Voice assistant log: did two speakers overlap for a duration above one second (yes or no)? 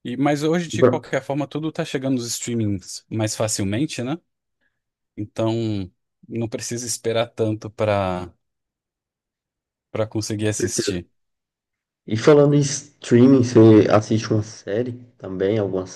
no